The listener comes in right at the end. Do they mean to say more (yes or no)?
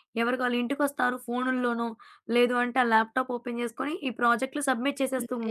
yes